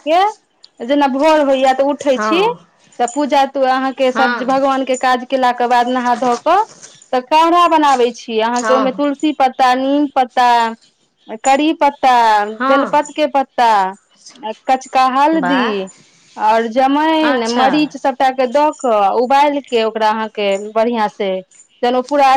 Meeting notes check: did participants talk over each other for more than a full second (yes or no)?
no